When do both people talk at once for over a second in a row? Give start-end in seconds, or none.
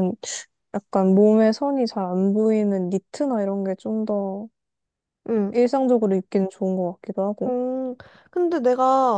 none